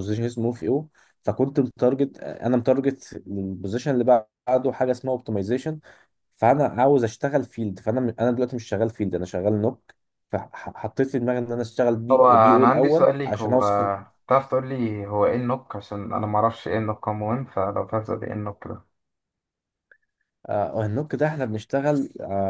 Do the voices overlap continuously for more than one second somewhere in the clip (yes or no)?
yes